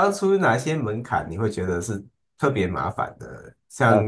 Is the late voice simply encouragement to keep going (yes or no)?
yes